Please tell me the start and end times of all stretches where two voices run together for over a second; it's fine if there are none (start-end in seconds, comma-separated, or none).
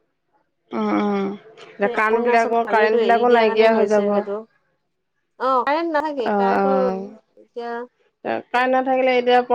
2.0-4.2